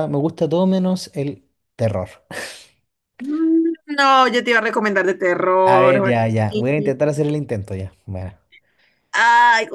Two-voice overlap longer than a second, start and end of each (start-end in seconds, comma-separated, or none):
5.7-6.9